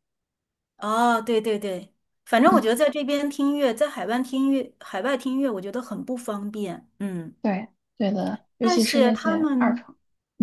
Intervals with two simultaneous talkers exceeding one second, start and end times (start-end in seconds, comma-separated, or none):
8.6-9.8